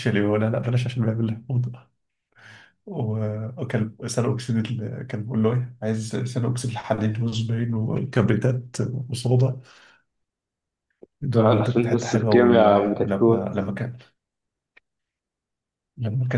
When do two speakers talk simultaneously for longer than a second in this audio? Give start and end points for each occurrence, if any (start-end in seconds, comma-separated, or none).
11.3-13.6